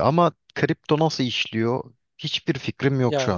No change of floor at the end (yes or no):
no